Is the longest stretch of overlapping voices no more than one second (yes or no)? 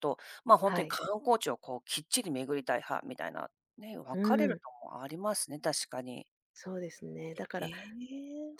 yes